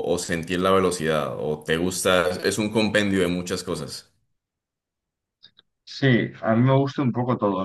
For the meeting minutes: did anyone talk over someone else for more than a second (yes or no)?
no